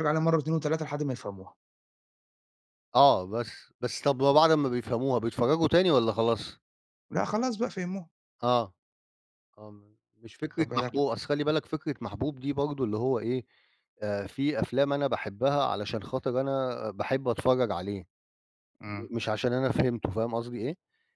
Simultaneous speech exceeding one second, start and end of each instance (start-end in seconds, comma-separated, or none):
none